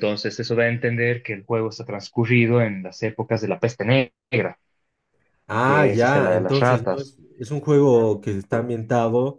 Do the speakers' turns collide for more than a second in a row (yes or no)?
yes